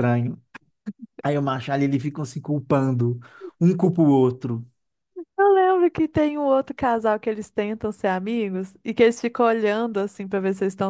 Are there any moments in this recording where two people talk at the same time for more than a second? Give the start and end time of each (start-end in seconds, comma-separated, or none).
none